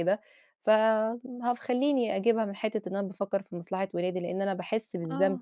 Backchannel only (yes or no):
yes